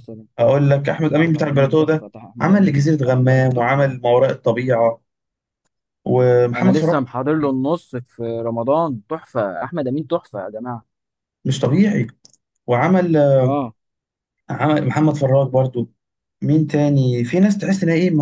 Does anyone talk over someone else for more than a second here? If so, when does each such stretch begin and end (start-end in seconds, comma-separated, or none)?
1.2-4.0